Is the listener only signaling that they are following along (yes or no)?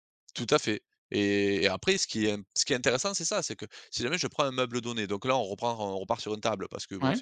yes